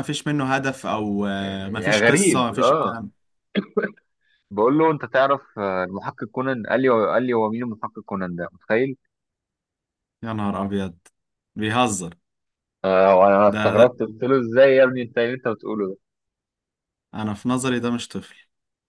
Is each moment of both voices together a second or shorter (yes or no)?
no